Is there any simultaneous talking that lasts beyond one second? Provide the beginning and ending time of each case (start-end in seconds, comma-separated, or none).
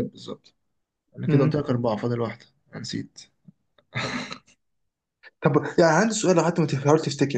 none